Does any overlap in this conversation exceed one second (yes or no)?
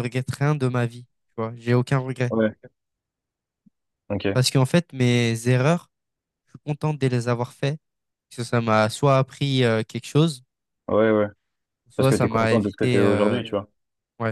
yes